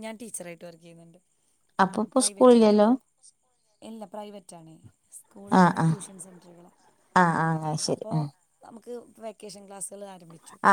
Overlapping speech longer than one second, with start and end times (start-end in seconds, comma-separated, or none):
none